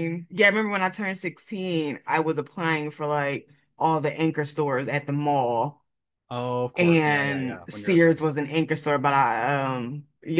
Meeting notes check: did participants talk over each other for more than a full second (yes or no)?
yes